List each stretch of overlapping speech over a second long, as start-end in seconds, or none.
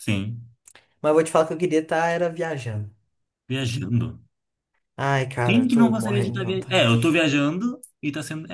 5.4-7.3